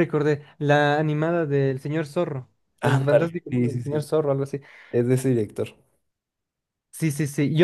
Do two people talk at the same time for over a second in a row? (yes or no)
yes